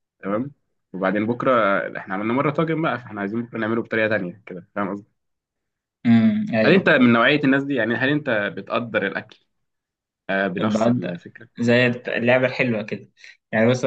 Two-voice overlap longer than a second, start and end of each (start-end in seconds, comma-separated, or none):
none